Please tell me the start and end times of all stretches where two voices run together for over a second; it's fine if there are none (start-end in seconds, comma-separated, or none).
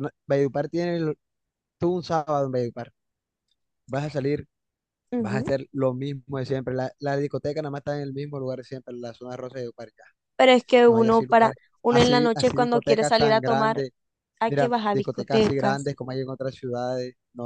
10.9-13.8, 14.5-15.9